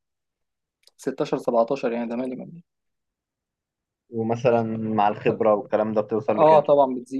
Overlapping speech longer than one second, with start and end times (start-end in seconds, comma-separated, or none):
none